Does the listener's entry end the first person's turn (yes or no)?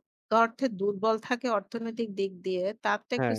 no